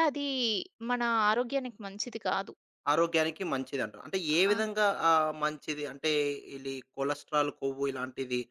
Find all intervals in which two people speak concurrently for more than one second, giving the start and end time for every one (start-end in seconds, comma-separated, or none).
none